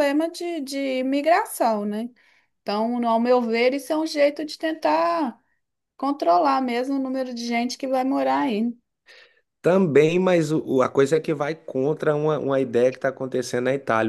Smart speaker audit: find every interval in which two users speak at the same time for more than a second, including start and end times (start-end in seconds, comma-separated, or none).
none